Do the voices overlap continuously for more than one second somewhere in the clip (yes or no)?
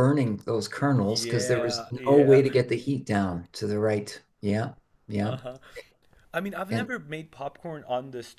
yes